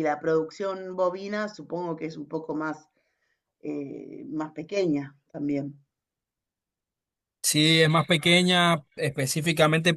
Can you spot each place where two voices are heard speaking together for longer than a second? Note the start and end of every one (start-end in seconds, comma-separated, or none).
none